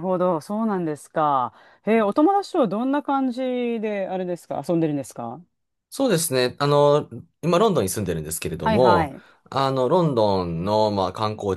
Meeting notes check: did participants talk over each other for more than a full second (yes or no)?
no